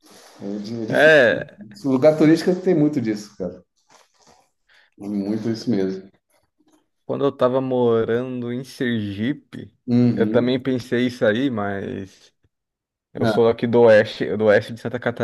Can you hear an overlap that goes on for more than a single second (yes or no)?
no